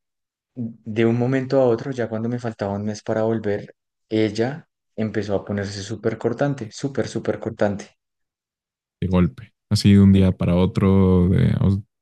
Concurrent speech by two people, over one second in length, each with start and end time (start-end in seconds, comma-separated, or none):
none